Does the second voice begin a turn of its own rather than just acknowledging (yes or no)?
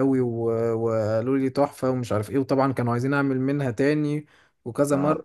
no